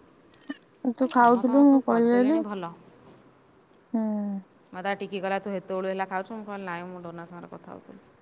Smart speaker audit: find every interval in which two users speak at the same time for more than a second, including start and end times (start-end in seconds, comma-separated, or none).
1.1-2.4